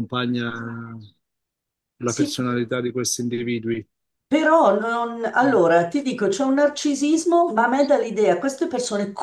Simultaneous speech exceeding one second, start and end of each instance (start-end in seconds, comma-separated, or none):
none